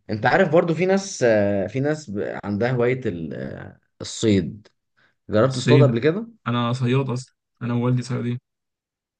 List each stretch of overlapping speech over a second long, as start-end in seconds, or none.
none